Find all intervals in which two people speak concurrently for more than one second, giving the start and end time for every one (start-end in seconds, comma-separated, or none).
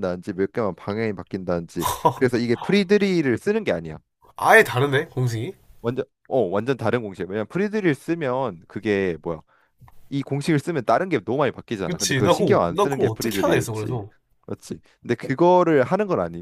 11.9-14.0